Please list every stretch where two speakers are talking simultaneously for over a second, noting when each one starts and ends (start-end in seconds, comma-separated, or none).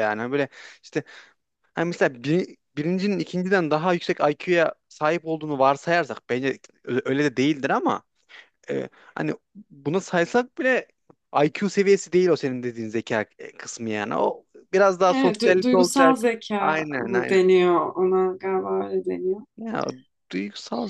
15.1-17.4